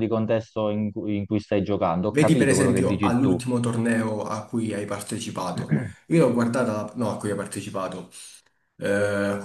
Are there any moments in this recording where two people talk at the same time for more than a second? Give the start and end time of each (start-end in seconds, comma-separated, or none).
2.1-3.4